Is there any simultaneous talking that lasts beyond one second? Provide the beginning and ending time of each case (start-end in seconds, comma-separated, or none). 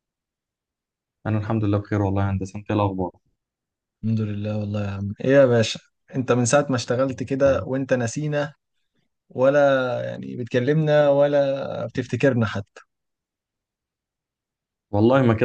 none